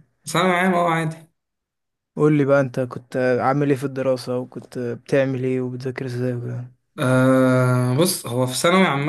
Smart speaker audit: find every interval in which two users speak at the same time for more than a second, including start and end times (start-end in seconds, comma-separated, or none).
none